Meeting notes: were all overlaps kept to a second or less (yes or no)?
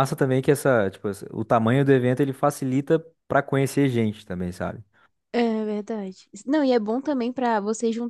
yes